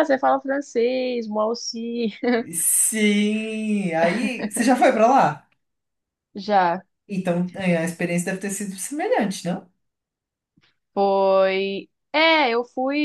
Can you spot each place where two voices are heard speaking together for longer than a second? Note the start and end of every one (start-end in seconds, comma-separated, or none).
none